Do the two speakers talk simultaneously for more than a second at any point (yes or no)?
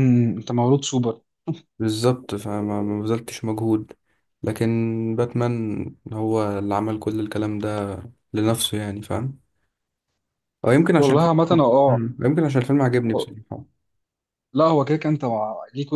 no